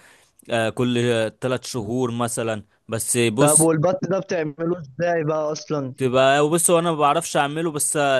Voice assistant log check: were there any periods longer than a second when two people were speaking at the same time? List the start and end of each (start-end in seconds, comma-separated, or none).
none